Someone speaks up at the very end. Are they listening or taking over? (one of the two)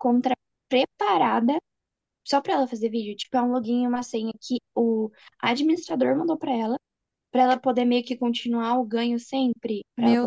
taking over